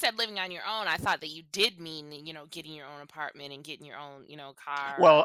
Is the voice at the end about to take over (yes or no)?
yes